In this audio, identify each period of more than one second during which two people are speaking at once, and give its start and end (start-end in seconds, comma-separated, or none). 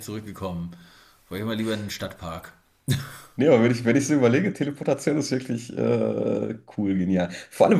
none